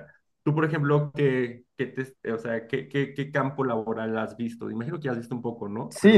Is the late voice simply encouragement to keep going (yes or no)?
no